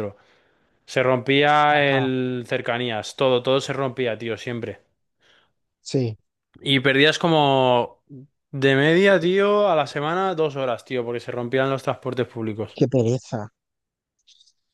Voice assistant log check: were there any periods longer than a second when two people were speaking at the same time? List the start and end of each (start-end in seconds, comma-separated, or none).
none